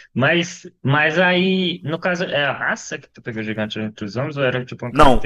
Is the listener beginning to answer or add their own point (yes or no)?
yes